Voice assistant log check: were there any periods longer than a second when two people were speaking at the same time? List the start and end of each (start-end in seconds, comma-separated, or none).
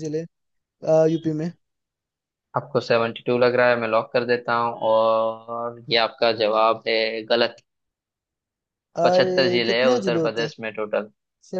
9.0-10.5